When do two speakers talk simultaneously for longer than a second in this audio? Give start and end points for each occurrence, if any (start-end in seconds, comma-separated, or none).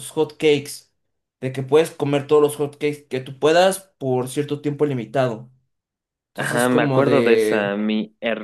6.4-7.8